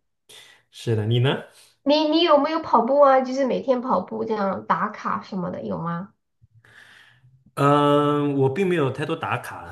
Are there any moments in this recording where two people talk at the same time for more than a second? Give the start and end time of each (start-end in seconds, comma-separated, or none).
none